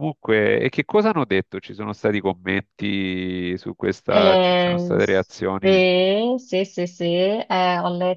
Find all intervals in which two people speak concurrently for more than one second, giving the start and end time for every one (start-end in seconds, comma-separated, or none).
4.1-5.8